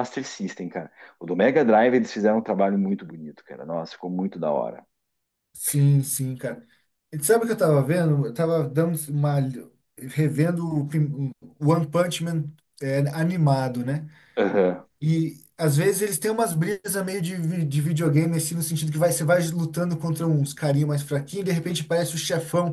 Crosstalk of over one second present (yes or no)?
no